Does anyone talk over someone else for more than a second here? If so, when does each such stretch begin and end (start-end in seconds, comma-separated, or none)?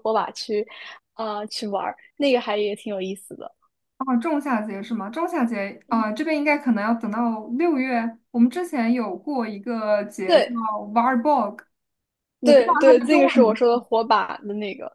12.4-13.9